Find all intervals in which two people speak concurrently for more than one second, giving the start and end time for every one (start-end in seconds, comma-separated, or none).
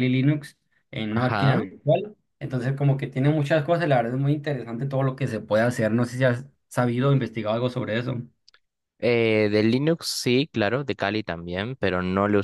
none